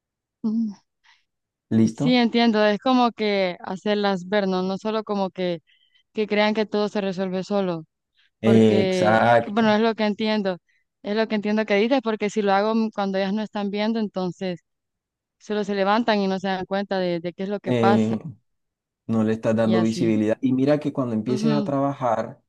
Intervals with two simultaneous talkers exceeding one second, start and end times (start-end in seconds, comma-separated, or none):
8.4-9.8